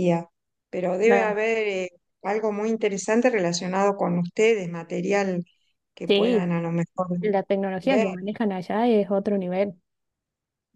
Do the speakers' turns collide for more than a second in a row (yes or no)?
no